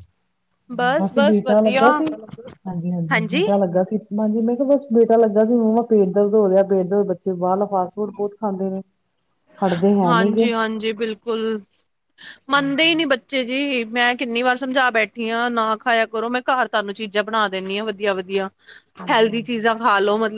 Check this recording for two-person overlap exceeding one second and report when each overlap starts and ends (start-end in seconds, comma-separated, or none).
none